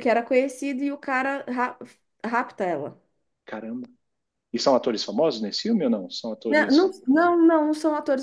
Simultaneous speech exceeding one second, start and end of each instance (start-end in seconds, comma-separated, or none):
none